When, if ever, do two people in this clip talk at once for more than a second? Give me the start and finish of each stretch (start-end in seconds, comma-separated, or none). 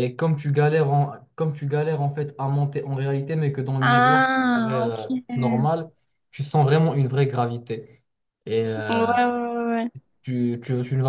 3.8-5.7